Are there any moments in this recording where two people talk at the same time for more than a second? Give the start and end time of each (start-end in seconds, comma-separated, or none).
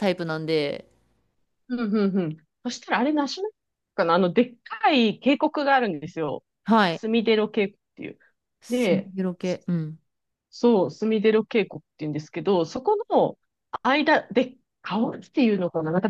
none